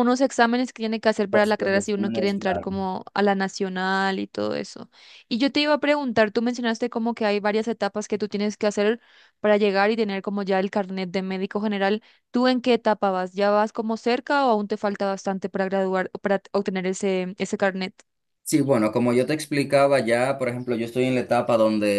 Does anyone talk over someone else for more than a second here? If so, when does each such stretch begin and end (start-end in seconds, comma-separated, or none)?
1.3-2.7